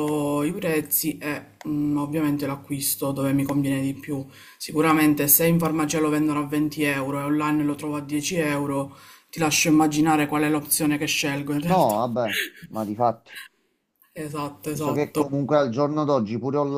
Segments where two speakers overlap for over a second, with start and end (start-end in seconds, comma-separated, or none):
none